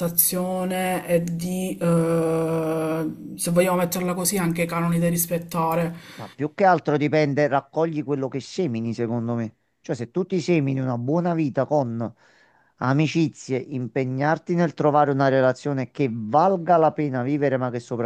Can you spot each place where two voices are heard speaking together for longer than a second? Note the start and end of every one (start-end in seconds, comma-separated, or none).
none